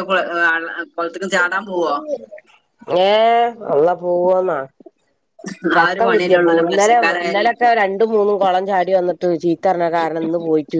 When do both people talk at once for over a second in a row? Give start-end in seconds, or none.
5.8-7.5